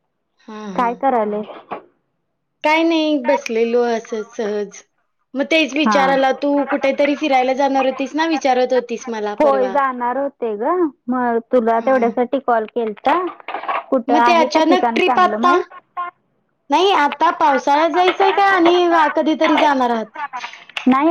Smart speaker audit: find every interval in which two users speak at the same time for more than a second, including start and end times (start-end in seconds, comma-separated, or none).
14.1-15.6